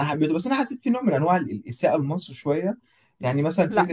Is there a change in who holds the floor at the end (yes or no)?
no